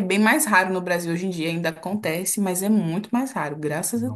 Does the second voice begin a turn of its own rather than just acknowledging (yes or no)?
yes